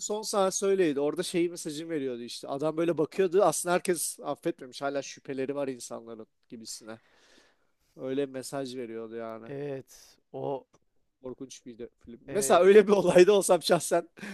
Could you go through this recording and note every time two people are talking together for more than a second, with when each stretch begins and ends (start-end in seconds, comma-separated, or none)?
none